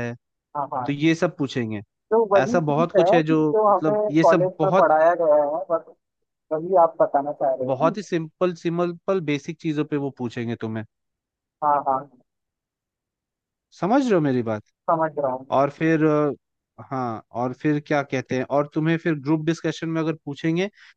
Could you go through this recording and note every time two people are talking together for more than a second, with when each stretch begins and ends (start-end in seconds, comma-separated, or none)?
2.4-4.9